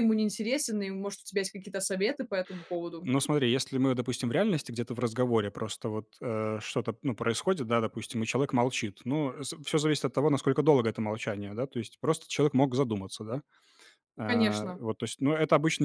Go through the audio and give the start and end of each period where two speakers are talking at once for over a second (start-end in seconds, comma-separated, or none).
none